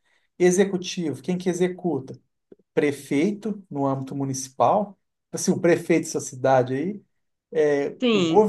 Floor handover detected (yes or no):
no